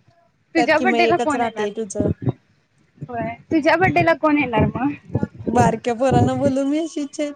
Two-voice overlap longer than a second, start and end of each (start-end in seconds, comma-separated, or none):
0.6-2.0